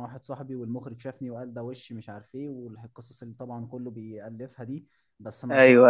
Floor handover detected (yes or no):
no